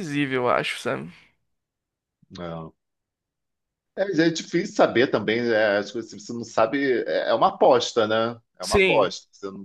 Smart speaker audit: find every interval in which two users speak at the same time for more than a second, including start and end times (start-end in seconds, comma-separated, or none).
none